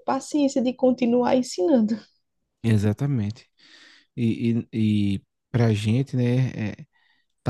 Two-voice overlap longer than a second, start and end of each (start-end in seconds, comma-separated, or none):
none